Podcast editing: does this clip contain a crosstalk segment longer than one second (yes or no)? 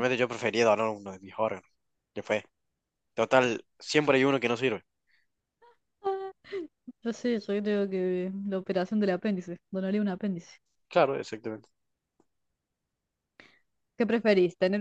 no